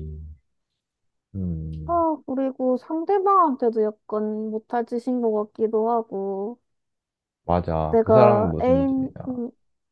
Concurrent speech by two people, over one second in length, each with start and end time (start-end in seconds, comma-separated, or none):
7.9-9.3